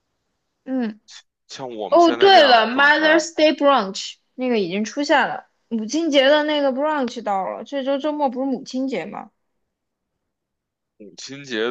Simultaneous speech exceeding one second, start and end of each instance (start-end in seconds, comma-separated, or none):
1.9-3.2